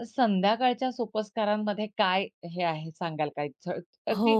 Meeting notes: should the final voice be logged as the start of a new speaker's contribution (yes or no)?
yes